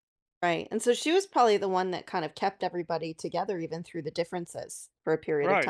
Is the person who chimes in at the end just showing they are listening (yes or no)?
no